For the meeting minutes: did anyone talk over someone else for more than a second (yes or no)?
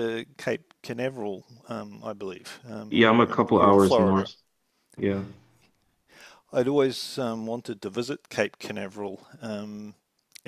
yes